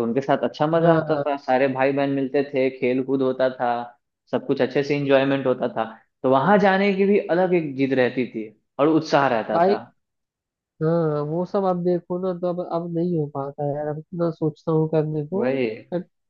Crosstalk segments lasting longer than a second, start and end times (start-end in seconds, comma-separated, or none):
none